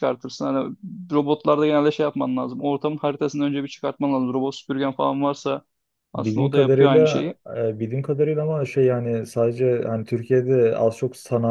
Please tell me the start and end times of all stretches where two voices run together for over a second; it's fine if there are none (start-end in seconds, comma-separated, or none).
6.2-7.4